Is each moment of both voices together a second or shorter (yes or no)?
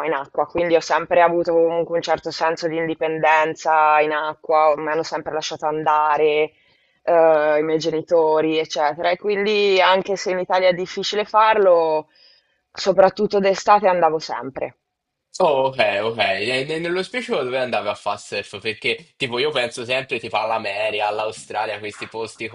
yes